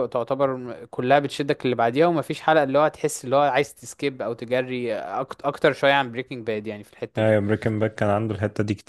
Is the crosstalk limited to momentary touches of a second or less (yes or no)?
yes